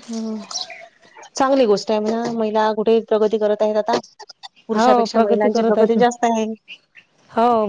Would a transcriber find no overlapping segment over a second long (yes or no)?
no